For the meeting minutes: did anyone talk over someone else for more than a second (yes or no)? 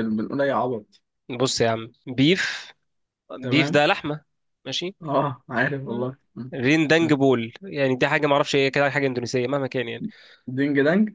no